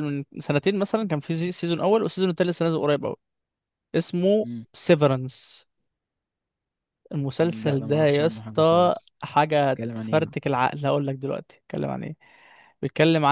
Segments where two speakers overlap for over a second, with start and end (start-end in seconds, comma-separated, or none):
7.4-9.1